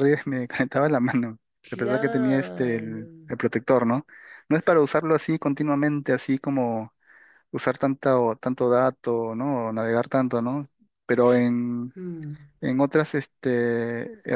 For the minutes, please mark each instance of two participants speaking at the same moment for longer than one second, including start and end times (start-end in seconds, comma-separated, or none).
1.7-3.0